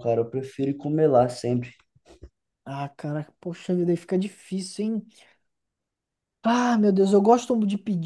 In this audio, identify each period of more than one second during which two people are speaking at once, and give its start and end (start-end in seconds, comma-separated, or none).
none